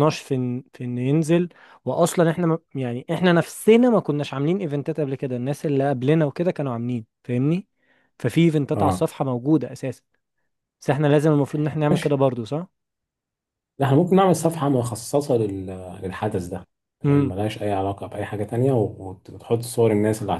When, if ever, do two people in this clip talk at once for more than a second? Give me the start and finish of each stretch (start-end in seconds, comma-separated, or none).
none